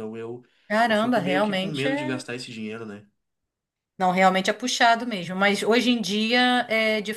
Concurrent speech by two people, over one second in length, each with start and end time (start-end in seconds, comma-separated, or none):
0.9-2.2